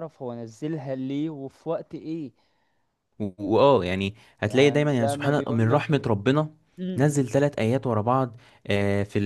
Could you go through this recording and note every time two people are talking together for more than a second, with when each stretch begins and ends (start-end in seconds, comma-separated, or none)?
4.4-6.0